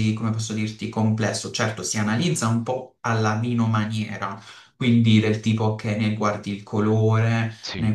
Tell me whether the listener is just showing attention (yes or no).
yes